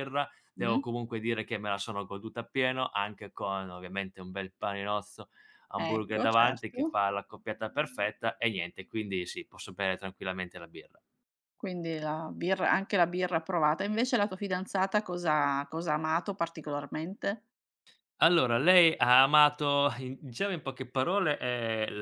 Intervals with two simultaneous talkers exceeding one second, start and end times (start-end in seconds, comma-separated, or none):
5.8-7.0